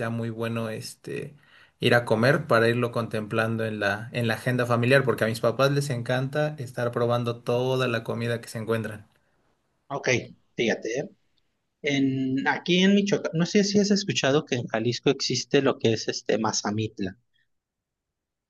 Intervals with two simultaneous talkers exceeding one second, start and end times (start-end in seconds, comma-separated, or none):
none